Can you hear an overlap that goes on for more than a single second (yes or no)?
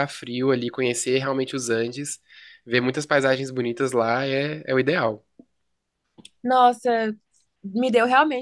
no